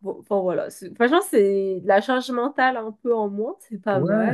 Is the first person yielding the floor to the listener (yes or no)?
yes